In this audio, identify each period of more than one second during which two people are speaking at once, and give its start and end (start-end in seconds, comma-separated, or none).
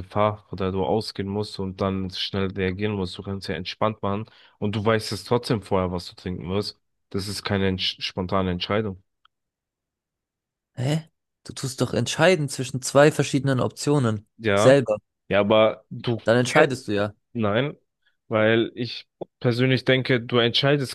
none